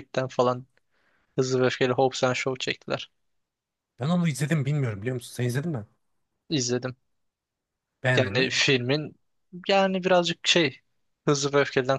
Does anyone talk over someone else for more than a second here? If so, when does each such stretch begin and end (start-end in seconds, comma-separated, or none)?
none